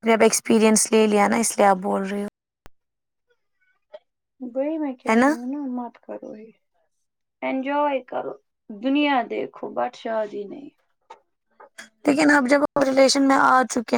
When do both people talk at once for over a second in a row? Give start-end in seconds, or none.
none